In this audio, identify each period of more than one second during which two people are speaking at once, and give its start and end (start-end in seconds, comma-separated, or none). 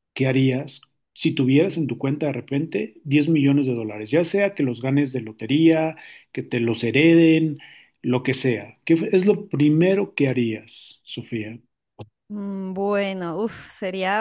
none